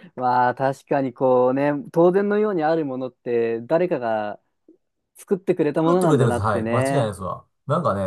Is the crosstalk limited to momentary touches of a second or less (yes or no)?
no